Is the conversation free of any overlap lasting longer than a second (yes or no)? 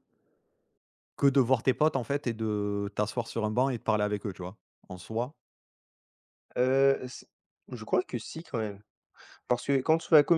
yes